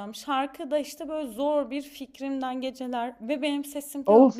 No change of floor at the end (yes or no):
yes